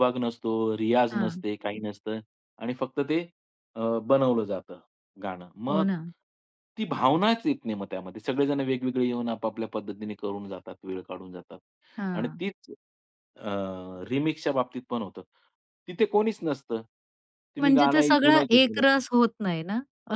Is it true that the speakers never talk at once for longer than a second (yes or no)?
no